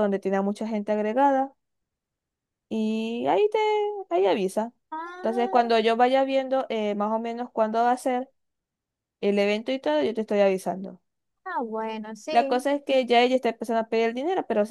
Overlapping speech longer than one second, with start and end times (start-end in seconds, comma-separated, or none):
none